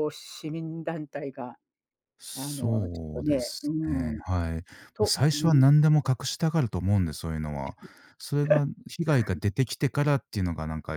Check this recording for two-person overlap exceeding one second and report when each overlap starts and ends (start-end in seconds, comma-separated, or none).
2.3-4.2